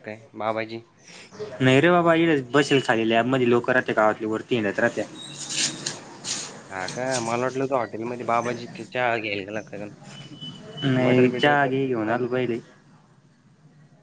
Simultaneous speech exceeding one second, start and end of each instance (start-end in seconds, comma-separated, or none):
10.9-12.4